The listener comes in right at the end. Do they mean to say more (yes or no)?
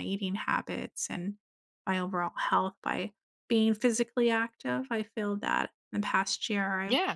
no